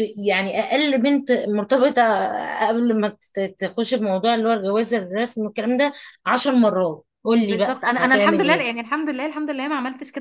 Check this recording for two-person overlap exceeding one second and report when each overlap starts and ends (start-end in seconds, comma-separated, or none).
7.4-8.7